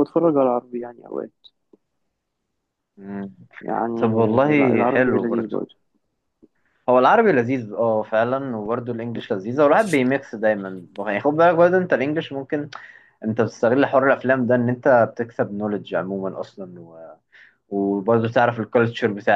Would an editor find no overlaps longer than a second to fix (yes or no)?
no